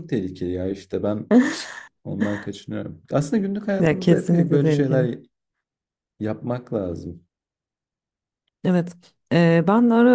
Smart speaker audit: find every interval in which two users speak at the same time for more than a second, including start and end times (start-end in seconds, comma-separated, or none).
3.8-5.1